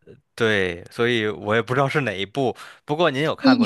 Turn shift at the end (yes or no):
yes